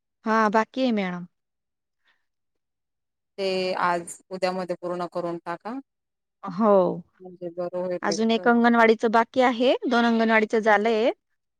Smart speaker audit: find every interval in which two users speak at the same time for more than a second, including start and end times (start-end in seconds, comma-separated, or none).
none